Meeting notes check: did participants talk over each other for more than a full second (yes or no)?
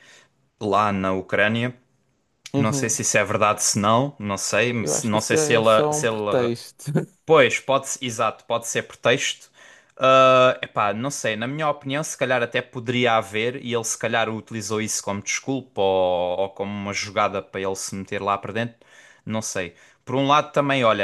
yes